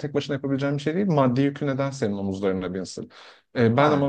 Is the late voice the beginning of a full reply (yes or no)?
no